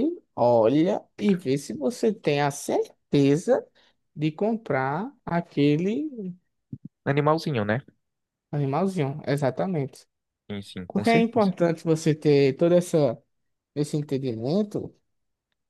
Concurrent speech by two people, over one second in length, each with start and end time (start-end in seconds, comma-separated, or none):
none